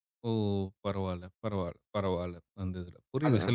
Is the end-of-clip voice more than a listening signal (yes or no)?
no